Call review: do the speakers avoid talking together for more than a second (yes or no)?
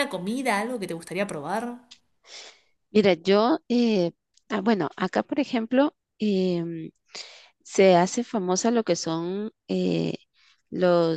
yes